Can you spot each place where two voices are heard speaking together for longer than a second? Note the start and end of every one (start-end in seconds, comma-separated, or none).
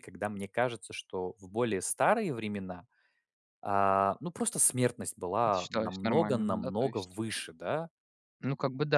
5.4-7.2